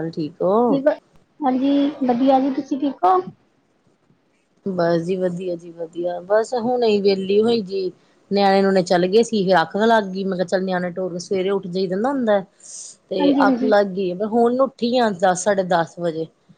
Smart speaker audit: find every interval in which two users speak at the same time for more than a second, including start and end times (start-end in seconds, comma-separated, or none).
none